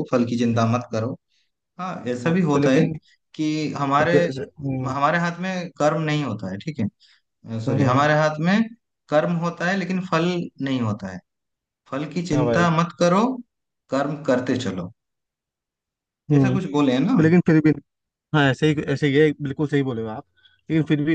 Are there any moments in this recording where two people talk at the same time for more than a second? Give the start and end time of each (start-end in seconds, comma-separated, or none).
none